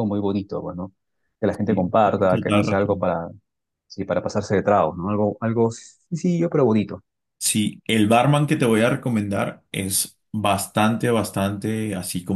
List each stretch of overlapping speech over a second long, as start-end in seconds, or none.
1.7-3.1